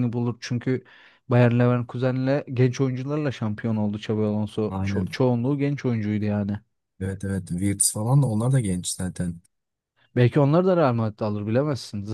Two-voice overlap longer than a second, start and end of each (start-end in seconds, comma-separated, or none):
none